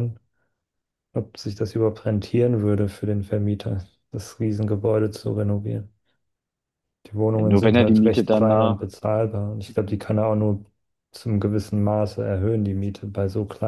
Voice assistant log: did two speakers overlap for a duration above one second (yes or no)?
yes